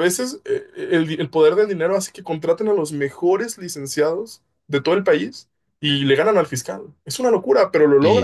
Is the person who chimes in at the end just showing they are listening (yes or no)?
no